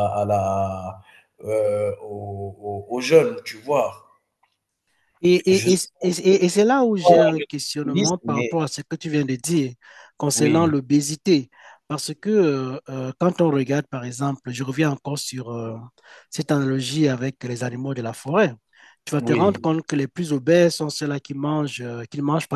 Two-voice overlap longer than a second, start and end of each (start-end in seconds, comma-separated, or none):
7.0-8.6